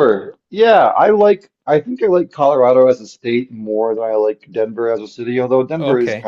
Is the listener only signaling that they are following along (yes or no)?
yes